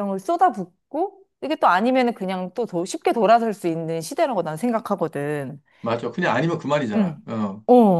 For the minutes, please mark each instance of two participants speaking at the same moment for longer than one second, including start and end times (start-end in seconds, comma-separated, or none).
none